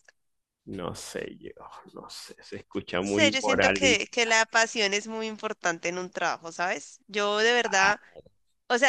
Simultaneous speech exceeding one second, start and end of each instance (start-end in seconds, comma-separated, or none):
3.0-4.3